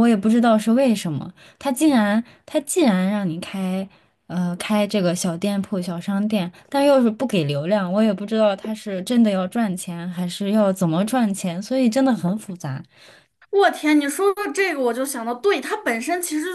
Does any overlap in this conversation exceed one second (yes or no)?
no